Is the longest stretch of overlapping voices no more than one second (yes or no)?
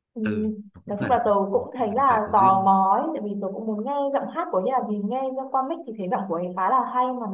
no